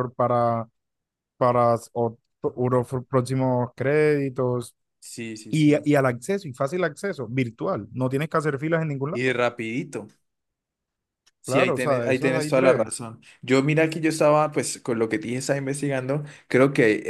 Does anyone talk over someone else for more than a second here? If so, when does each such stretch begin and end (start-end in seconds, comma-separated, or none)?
11.4-12.9